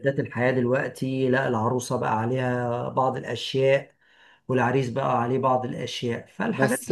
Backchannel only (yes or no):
no